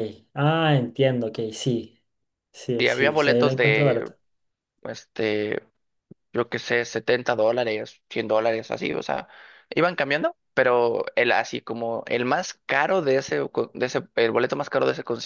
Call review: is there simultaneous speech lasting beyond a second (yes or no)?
yes